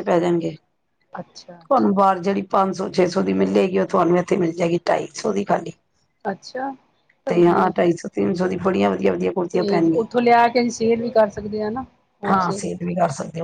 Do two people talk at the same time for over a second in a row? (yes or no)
no